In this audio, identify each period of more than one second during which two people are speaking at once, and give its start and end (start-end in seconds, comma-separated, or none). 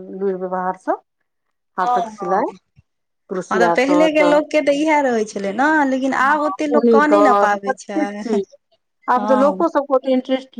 6.3-8.4